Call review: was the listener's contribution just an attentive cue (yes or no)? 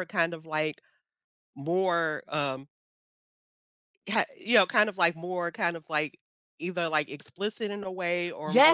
yes